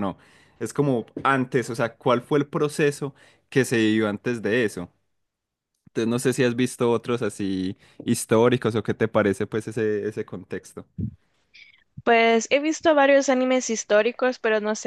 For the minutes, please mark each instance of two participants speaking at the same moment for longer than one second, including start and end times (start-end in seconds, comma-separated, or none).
none